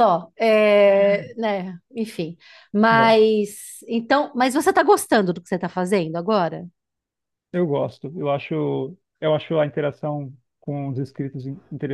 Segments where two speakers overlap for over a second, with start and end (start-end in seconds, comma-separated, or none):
none